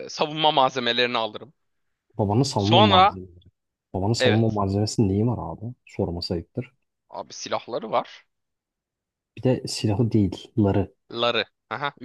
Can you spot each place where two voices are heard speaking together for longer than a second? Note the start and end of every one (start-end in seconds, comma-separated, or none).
none